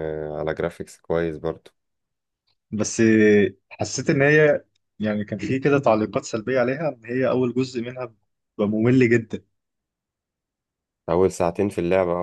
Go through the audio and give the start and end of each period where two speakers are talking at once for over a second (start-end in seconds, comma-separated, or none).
none